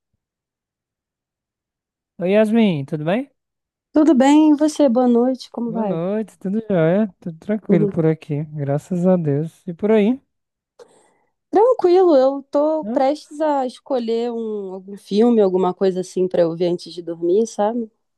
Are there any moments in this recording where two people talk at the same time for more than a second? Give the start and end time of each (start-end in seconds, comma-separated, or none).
none